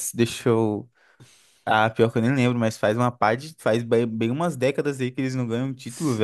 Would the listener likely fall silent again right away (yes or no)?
no